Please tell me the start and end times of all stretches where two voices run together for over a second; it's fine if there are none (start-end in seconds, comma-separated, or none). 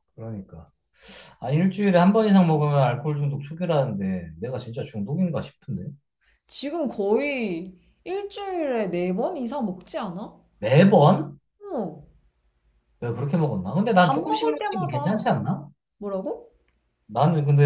14.0-15.3